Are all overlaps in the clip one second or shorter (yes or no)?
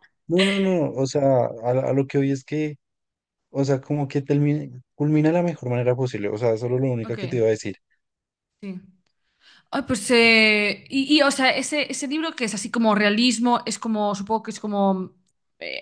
yes